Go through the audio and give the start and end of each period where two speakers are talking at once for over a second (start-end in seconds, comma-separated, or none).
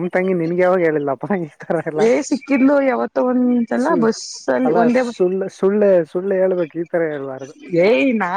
none